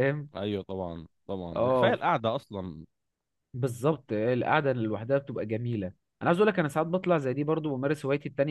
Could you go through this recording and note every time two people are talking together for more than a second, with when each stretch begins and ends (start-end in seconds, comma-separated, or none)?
none